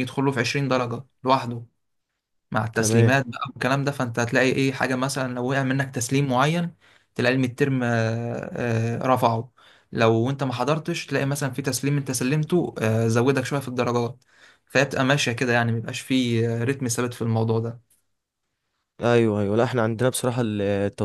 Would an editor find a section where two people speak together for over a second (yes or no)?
no